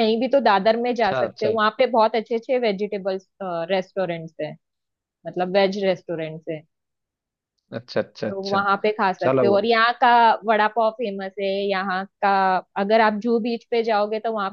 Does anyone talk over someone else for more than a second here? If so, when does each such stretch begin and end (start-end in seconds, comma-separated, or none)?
none